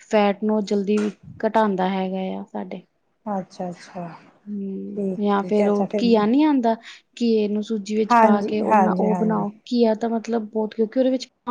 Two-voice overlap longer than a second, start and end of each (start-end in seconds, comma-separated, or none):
8.1-9.4